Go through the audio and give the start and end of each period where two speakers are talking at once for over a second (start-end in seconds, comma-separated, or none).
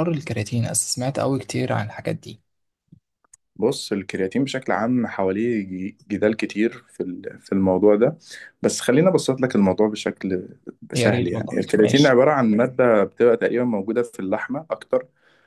10.9-12.2